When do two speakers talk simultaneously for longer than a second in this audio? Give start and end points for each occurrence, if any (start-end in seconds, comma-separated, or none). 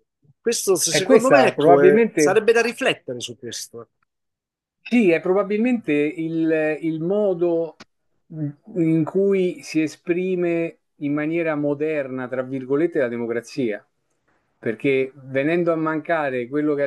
0.9-2.4